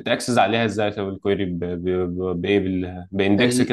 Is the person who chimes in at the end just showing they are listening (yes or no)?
yes